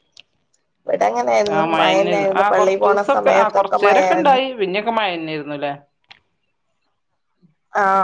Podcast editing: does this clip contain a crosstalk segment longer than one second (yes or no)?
yes